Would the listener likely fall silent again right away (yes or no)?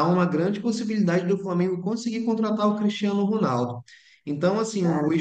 yes